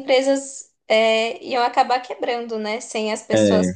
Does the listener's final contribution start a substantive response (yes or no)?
no